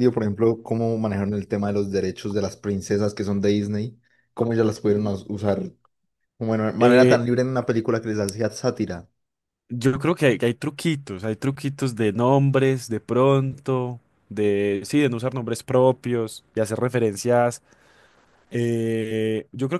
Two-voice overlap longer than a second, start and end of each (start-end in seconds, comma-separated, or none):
none